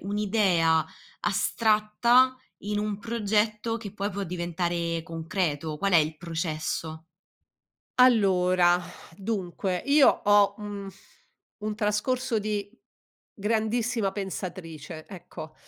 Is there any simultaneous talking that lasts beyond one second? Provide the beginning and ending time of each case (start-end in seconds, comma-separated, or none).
none